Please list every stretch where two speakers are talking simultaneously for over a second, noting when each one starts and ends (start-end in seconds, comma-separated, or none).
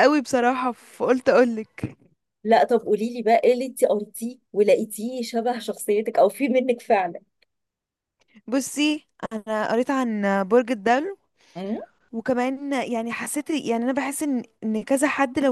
none